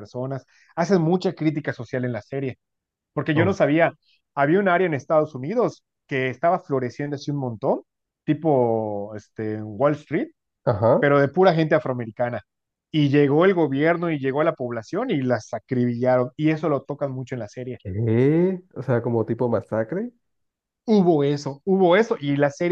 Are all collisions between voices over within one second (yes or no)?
yes